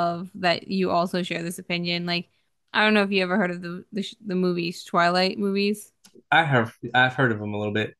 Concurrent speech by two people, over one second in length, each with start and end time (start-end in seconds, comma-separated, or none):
none